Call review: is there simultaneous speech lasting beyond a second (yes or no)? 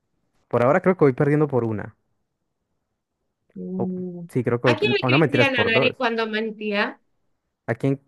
yes